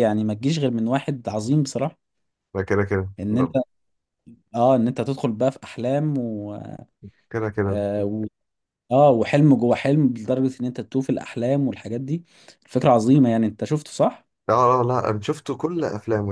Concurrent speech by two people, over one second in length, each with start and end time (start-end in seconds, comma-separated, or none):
none